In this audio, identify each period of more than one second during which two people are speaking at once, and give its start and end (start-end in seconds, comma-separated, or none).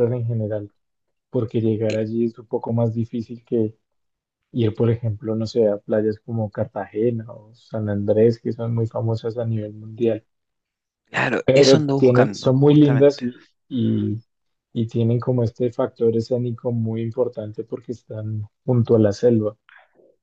11.4-13.2